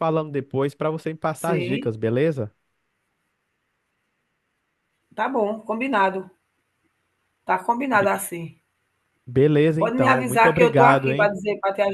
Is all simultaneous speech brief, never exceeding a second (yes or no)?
no